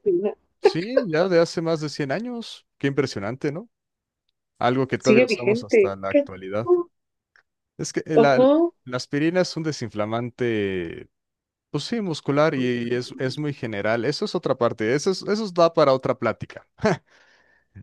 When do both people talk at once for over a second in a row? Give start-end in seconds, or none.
5.0-6.7